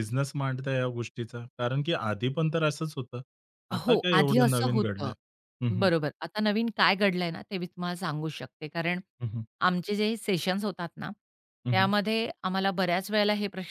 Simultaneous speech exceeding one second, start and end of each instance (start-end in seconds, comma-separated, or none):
3.9-5.1